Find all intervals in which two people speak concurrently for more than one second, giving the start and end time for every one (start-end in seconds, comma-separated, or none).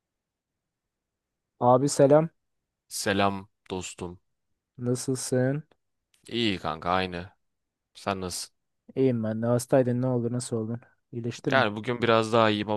none